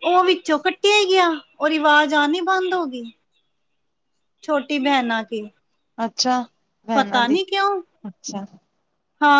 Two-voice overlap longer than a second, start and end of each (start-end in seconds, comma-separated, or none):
none